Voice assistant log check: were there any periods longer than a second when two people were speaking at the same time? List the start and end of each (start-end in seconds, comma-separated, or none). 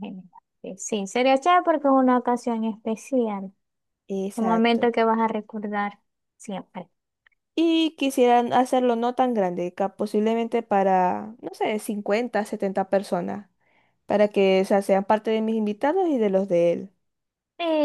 none